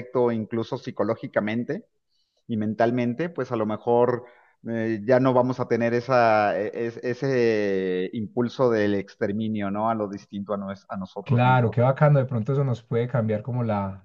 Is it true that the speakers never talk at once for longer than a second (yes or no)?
yes